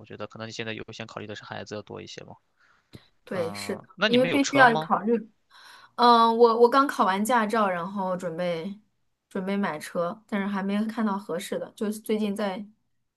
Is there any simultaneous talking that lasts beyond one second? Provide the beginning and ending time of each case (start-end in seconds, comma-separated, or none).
3.3-4.9